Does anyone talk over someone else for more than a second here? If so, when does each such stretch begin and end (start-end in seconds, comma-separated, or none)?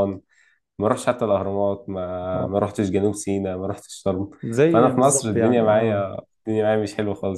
4.7-6.1